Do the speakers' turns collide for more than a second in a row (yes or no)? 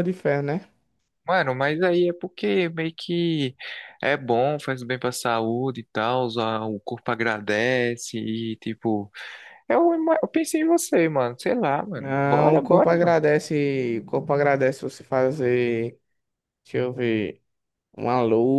yes